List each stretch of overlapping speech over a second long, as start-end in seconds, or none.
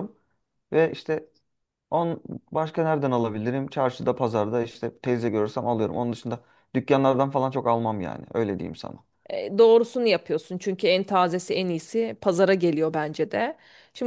none